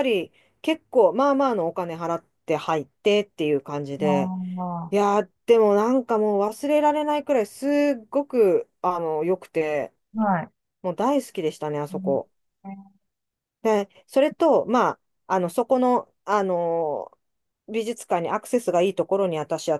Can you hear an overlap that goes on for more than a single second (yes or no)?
no